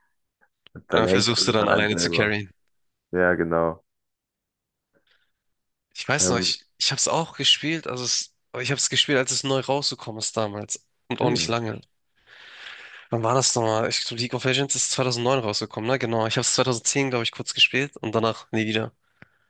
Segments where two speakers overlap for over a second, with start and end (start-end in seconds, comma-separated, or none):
0.9-2.3